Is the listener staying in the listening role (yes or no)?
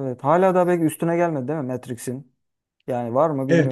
no